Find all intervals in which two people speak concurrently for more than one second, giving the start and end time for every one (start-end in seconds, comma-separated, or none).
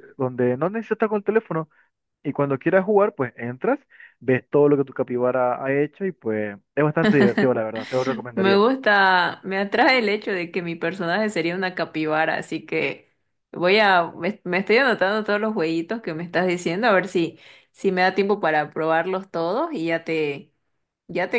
none